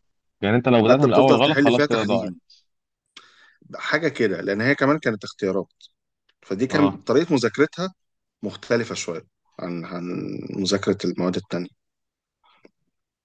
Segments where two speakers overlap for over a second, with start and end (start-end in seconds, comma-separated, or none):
0.8-2.4